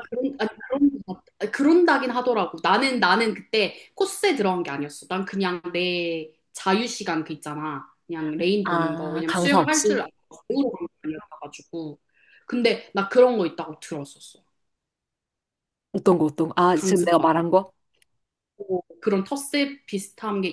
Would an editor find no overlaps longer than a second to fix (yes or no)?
no